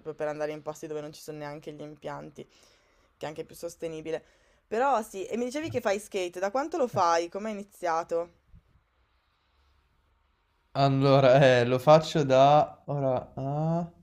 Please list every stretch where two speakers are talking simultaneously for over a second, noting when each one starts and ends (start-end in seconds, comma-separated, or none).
none